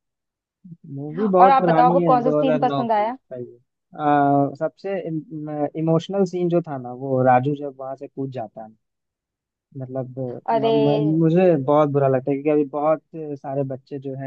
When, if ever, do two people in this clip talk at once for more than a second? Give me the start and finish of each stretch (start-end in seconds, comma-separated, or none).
1.4-3.2